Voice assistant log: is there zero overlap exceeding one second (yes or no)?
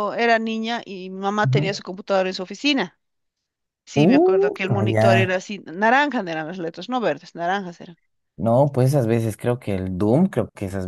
no